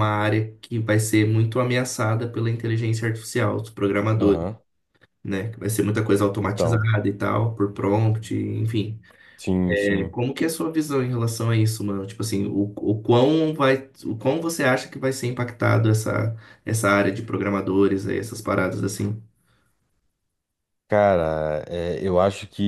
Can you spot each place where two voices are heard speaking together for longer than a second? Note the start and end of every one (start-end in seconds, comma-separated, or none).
none